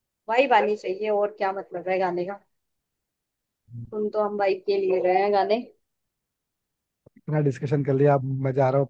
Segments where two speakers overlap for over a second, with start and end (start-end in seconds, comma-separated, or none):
none